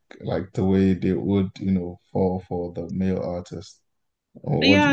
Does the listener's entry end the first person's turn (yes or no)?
yes